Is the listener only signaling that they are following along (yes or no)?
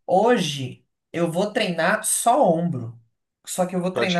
yes